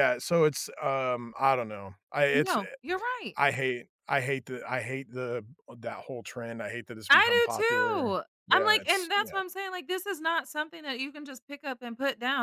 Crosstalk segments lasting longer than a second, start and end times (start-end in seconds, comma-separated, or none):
7.1-9.4